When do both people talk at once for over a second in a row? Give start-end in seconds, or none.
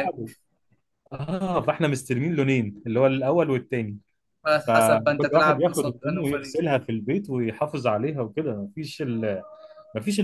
4.7-6.6